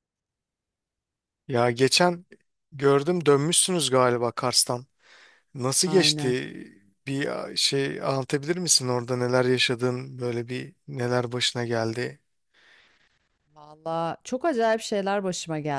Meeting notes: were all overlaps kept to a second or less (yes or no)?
yes